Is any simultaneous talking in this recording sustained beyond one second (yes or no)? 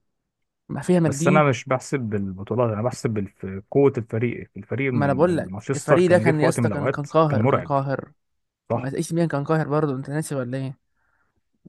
yes